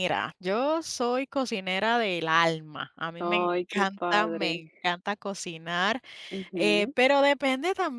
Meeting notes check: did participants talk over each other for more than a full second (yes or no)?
yes